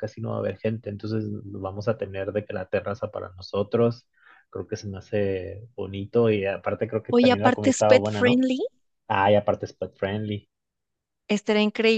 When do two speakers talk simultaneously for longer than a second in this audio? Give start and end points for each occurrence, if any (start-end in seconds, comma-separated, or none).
7.1-8.4